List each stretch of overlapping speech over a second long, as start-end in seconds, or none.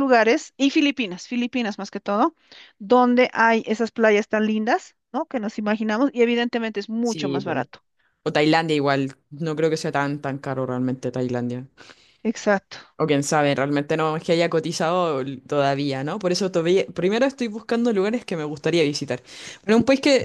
none